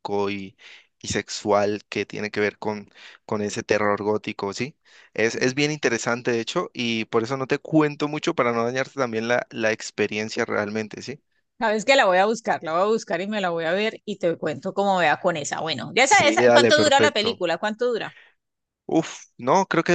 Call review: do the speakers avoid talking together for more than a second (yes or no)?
no